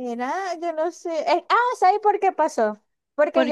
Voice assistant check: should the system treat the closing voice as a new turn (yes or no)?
no